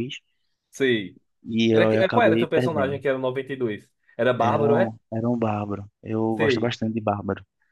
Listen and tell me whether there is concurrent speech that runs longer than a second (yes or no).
yes